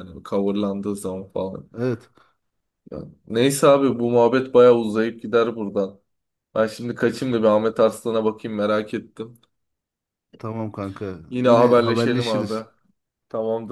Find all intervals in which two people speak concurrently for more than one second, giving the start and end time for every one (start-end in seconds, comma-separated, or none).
11.3-12.6